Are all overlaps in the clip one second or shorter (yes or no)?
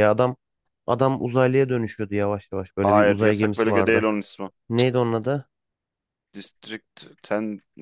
no